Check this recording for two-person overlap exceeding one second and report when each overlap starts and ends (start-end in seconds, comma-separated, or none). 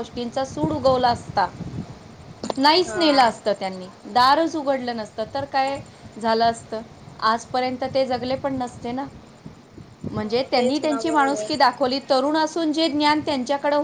10.2-11.5